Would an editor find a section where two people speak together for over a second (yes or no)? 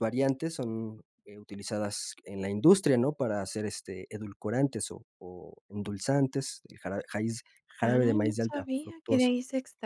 yes